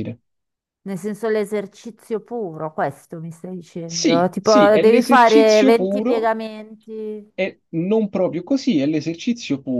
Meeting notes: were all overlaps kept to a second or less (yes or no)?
no